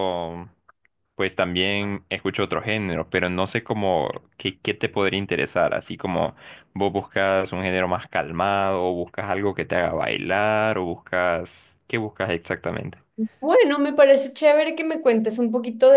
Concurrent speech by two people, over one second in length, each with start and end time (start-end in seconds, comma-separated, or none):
none